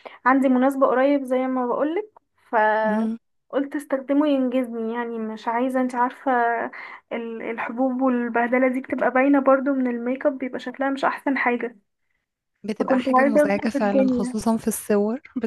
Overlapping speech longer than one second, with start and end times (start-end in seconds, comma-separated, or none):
12.8-14.4